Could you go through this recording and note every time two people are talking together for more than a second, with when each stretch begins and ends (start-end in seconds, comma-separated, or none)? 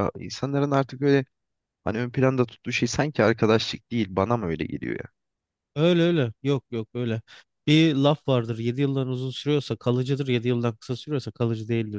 none